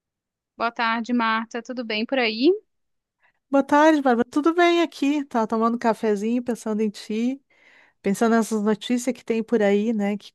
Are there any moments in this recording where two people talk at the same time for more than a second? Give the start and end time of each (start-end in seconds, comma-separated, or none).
none